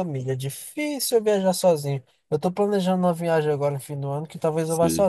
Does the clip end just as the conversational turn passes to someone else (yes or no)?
no